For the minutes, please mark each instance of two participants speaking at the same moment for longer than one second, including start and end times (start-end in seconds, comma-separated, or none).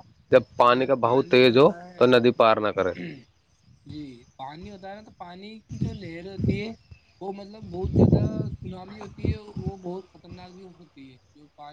0.6-2.2